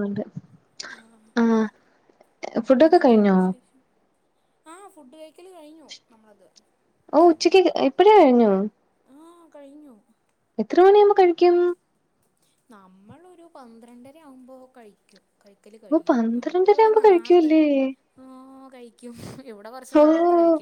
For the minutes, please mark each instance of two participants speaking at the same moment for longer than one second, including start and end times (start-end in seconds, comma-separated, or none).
15.9-17.5